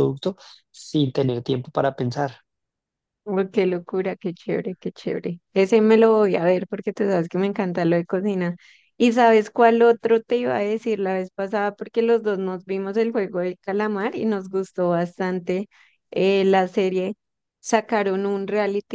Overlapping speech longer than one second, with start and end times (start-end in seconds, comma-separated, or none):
none